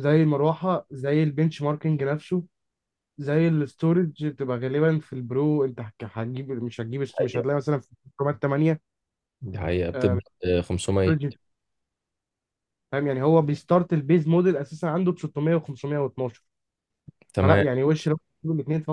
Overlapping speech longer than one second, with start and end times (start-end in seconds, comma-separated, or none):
none